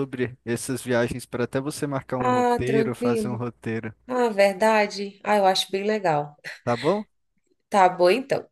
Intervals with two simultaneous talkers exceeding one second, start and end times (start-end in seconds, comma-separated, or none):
2.2-3.4